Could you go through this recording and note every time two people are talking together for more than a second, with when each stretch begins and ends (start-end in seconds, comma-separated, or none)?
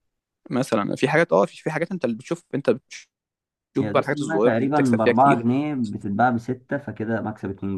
3.8-5.4